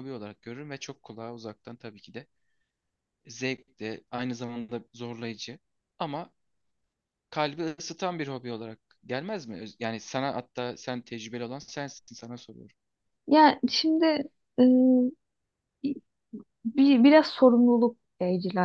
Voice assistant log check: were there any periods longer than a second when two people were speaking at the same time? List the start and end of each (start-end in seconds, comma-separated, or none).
none